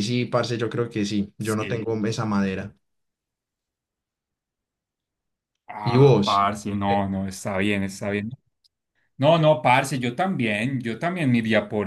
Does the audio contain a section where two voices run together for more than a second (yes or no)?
no